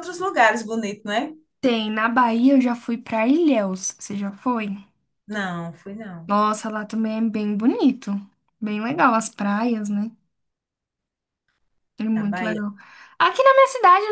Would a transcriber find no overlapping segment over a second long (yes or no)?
yes